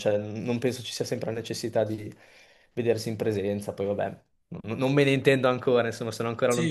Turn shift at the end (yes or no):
yes